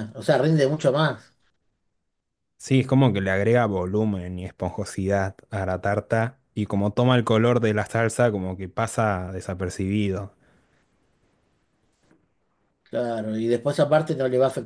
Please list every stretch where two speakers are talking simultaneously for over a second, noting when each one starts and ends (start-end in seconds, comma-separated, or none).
none